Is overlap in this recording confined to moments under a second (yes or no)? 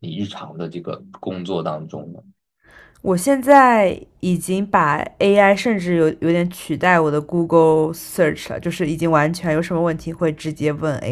yes